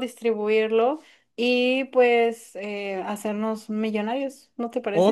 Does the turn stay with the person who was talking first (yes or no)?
no